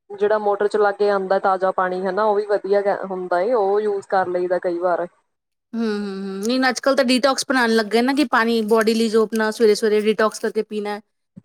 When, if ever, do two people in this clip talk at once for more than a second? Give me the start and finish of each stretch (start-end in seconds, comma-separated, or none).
none